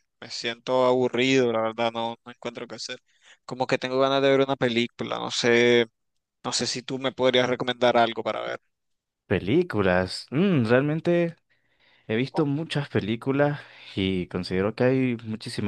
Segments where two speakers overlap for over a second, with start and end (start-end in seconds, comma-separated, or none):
none